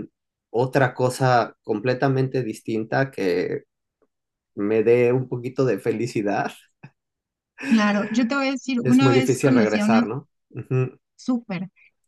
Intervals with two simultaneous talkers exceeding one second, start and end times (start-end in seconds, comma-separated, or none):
8.8-10.0